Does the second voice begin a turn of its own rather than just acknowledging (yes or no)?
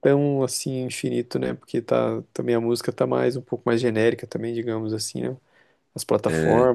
yes